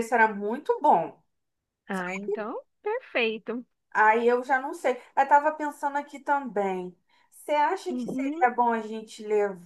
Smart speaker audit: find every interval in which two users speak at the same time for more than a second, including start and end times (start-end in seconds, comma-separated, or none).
none